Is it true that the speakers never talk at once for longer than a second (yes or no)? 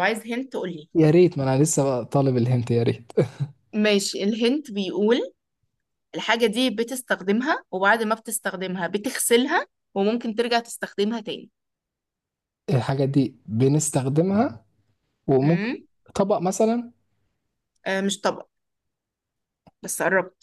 yes